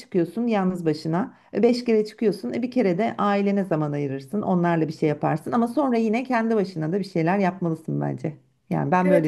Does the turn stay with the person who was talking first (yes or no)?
no